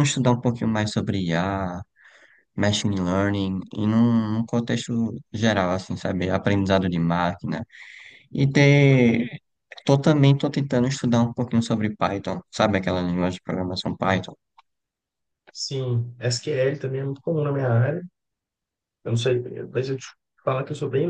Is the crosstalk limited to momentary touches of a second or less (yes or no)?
yes